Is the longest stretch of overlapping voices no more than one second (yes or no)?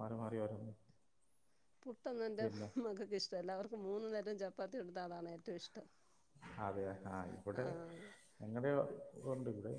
yes